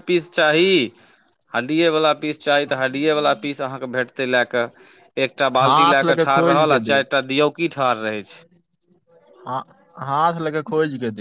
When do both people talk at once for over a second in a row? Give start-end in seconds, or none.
5.6-7.1